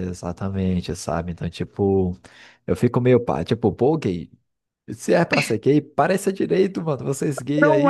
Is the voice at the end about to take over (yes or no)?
no